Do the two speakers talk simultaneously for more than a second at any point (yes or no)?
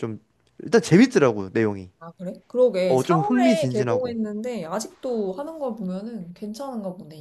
yes